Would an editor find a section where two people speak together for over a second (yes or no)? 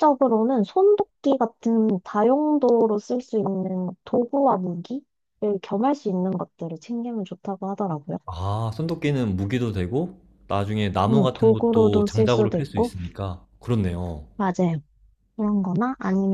yes